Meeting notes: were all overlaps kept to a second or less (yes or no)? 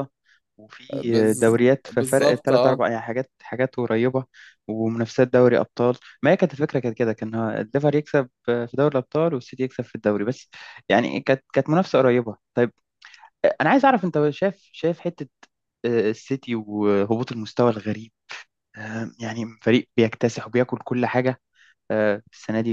no